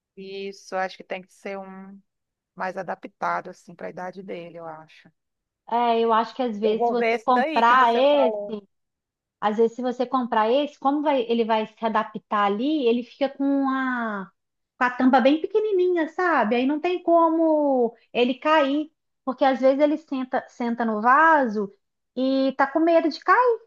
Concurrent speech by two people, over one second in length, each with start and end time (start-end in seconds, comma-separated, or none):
6.6-8.3